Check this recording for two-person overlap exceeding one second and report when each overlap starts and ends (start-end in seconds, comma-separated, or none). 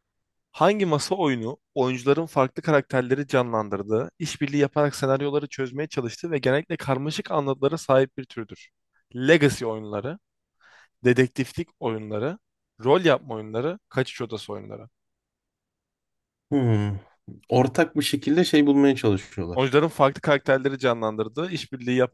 none